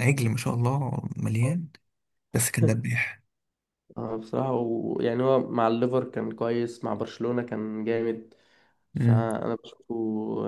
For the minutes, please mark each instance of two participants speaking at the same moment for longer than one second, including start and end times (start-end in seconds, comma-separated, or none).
none